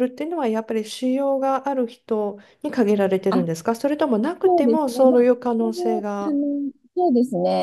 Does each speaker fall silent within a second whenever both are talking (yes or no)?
no